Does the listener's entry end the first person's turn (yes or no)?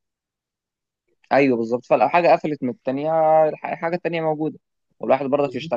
no